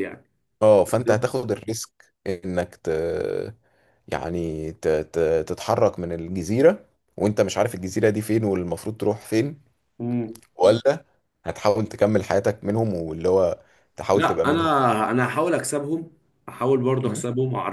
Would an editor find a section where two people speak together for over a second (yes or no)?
no